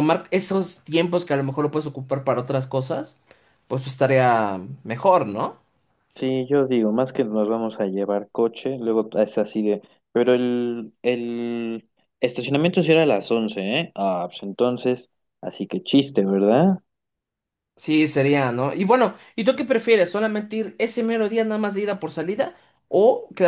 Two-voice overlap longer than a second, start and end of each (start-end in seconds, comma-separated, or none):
none